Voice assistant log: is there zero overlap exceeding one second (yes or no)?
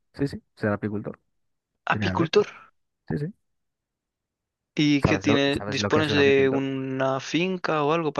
no